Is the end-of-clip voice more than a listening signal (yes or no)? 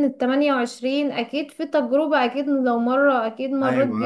yes